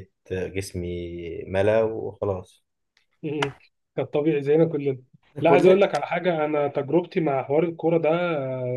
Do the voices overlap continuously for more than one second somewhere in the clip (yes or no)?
no